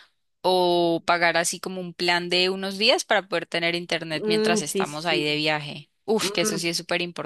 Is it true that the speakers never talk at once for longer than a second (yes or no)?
no